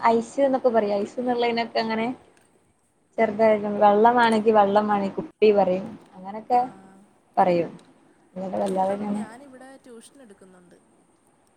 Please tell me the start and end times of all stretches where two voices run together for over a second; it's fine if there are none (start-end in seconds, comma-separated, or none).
none